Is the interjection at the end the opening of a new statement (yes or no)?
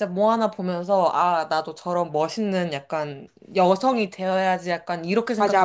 yes